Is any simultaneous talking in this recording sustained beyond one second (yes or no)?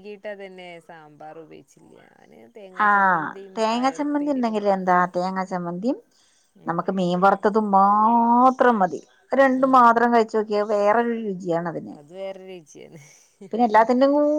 yes